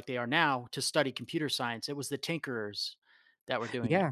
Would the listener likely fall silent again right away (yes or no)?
no